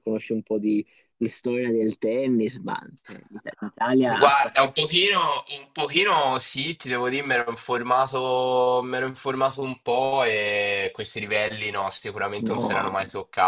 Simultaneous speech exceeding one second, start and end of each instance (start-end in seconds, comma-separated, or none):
none